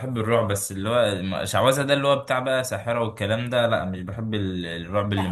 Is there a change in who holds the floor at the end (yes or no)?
yes